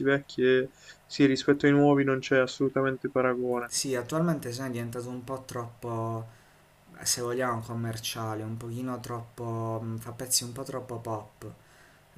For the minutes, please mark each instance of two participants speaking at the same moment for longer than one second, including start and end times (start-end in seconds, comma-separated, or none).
none